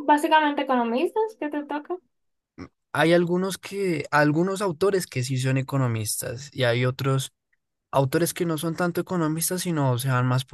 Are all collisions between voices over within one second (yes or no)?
yes